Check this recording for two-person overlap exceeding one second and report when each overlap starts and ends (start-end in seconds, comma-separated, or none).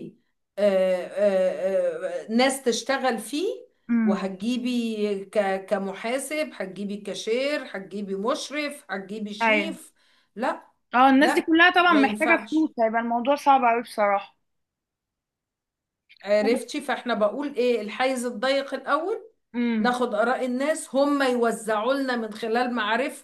11.2-12.7